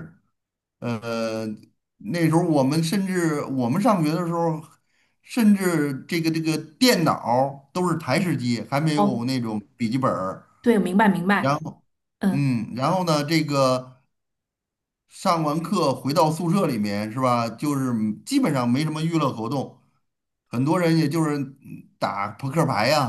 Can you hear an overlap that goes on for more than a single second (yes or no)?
no